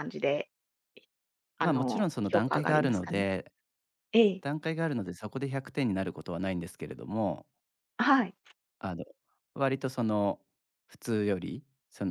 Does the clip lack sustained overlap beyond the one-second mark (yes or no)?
no